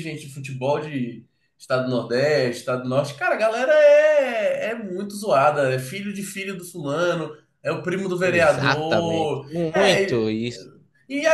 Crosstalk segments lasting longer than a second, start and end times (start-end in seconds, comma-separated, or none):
8.2-10.3